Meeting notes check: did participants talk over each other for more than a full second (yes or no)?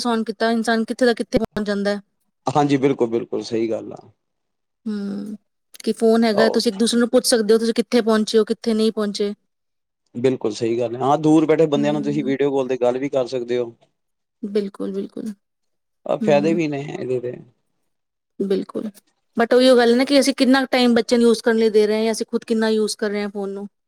no